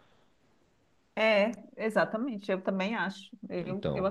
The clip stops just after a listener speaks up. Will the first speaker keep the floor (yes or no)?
yes